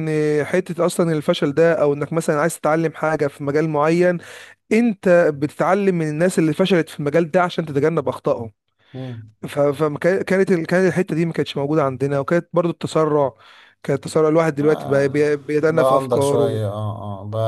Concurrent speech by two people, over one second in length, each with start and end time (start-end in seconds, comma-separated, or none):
14.6-16.6